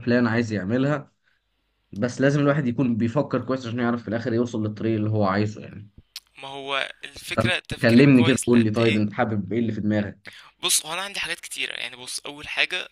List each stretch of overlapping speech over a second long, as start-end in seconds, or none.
7.3-9.1